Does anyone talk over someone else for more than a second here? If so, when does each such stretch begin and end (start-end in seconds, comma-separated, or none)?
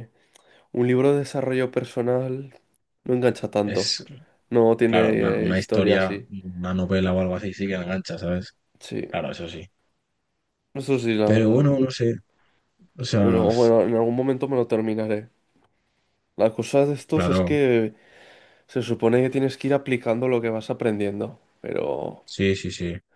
4.9-6.2